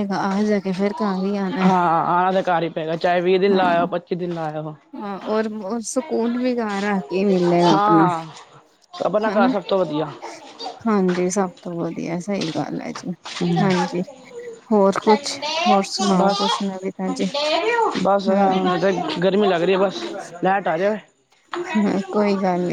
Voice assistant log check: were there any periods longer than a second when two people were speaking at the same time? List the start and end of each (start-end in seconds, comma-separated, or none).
none